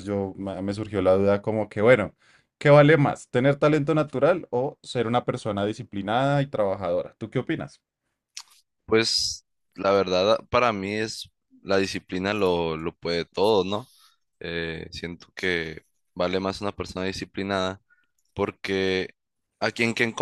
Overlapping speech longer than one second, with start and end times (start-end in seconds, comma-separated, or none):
none